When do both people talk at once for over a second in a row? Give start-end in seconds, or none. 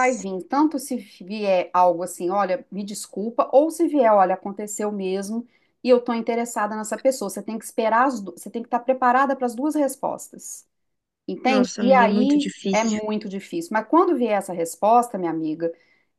11.5-13.0